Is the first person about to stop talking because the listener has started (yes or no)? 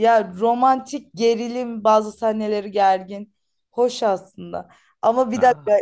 no